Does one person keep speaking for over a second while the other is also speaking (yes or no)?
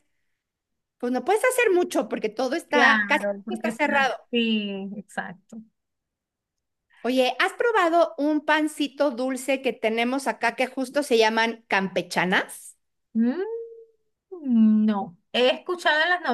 yes